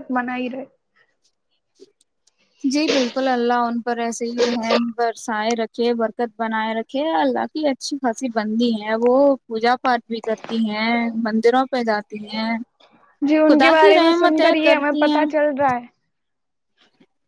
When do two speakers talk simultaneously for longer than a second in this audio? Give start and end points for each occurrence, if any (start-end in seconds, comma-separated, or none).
13.5-15.2